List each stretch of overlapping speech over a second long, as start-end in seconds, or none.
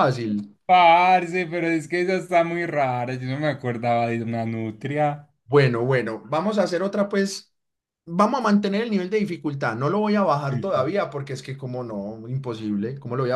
none